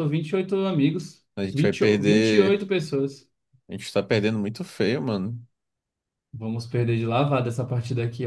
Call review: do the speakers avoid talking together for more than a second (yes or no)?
no